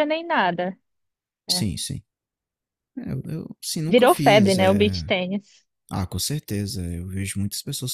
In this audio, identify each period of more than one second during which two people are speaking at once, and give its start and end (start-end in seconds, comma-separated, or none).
3.9-5.1